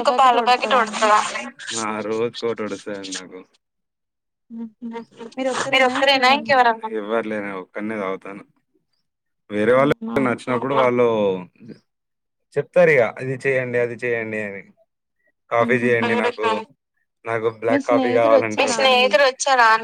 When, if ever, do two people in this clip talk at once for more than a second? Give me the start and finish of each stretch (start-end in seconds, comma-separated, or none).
17.7-19.1